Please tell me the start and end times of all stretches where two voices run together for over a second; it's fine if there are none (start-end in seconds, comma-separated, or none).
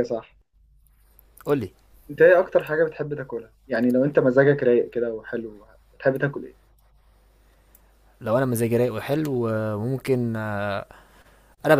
none